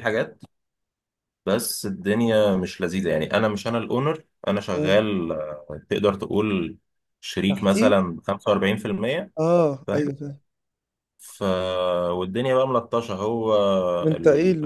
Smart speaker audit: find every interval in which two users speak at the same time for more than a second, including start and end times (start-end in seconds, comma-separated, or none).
none